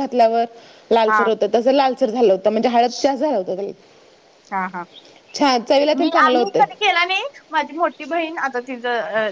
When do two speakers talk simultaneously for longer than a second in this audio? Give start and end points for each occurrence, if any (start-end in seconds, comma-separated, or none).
none